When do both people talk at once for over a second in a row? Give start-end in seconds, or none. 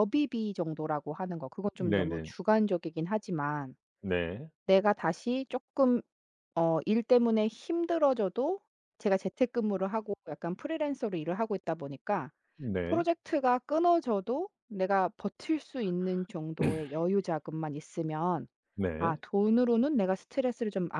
none